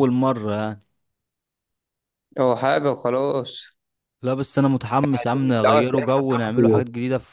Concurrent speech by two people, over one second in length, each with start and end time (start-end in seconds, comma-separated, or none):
5.6-6.8